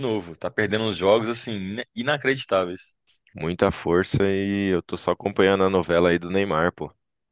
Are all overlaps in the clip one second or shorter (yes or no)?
yes